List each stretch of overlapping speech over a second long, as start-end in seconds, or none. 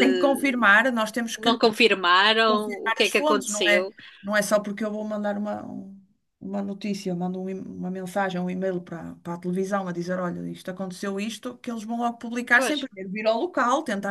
2.5-3.9